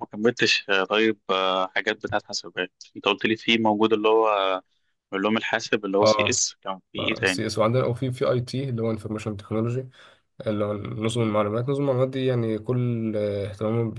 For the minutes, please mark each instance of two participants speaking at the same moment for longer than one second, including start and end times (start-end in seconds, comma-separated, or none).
none